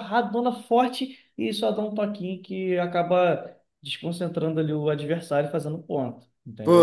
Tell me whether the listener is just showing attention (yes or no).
no